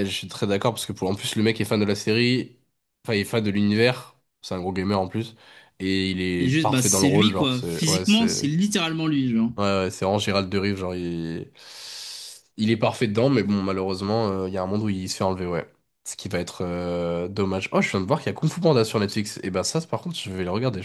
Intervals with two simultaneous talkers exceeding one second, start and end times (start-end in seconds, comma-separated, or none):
6.4-8.5